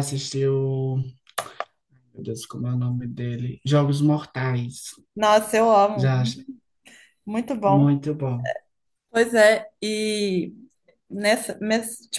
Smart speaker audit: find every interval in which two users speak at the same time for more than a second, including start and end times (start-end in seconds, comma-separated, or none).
none